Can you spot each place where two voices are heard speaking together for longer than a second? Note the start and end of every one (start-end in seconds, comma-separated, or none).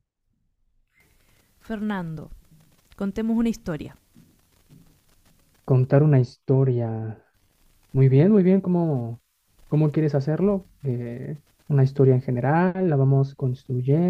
none